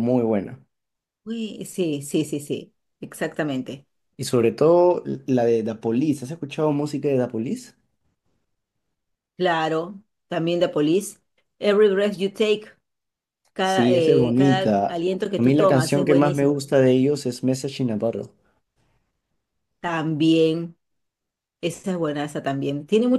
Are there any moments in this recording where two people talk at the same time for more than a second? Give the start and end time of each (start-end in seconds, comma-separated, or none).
13.6-16.6